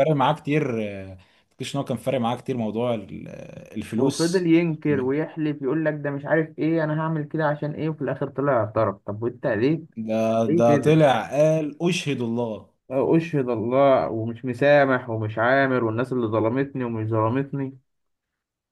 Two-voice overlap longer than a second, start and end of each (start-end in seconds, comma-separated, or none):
none